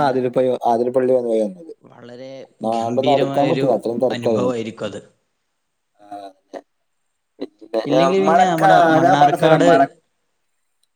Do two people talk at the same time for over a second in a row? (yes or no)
yes